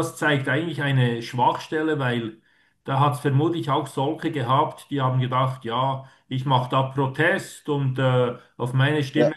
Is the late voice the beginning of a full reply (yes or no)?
no